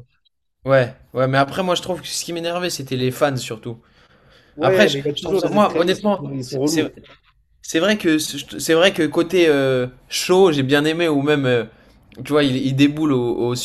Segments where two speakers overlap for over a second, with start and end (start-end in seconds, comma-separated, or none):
4.6-6.9